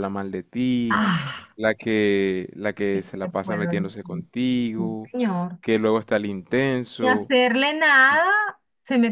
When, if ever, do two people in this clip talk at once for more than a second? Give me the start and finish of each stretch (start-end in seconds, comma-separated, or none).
2.9-5.1